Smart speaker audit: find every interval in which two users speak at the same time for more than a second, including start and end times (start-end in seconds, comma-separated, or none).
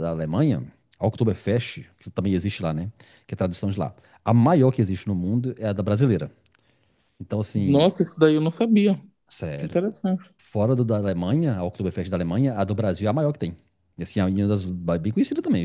none